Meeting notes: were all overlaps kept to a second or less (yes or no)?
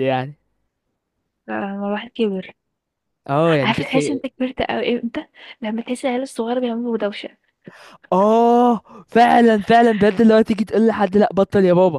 yes